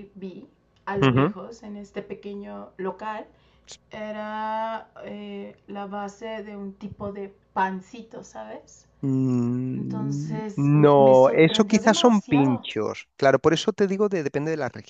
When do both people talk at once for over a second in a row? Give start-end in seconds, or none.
9.8-12.7